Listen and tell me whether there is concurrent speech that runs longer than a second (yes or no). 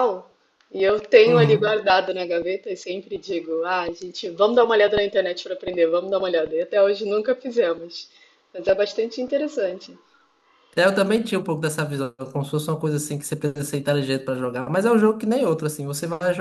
no